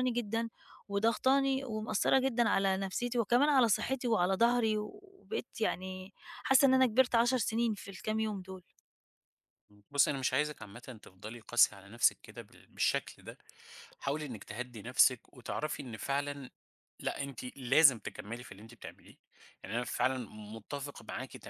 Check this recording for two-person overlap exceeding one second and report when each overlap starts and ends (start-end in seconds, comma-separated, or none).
none